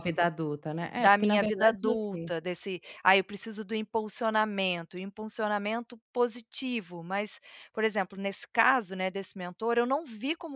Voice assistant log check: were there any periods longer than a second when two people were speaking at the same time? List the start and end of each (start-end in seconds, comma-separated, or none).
1.0-2.3